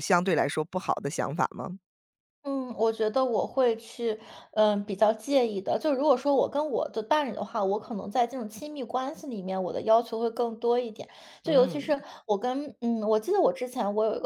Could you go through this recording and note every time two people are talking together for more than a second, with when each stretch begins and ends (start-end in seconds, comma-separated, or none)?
none